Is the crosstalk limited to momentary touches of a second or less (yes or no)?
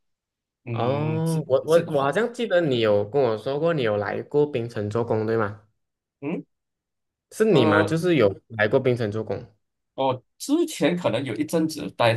no